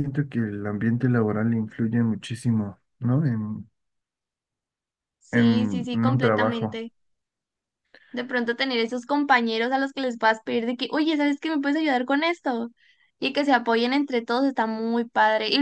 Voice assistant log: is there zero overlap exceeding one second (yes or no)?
no